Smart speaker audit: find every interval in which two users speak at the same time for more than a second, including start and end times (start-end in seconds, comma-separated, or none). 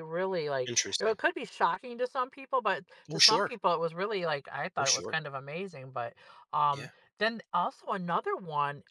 none